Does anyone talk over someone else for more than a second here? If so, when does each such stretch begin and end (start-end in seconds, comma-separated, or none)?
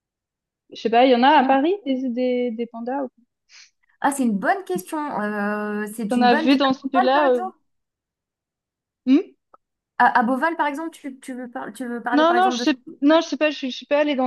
6.1-7.4